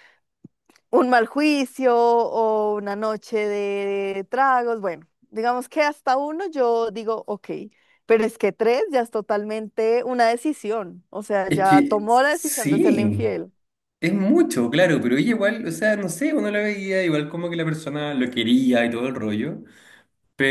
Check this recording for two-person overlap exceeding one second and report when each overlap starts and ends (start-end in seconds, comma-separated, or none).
11.5-13.2